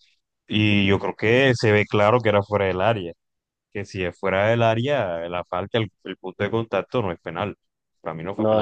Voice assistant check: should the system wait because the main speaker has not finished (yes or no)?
no